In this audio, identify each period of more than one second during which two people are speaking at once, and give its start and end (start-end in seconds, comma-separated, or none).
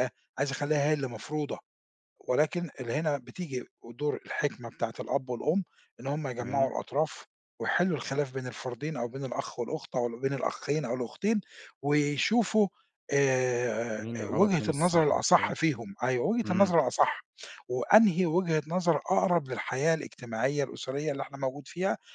14.0-15.5